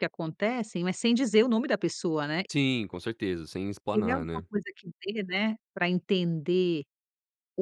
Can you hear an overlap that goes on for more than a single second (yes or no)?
no